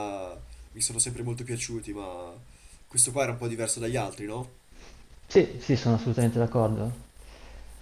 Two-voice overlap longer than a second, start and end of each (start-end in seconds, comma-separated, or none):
none